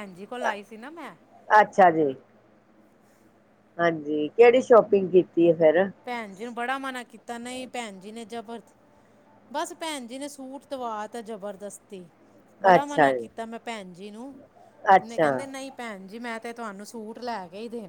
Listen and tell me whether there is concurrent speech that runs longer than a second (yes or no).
no